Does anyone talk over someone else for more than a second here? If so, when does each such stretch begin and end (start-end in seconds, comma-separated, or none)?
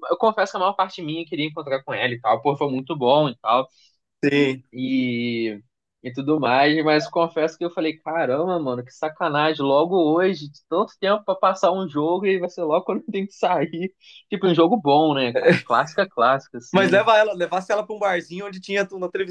none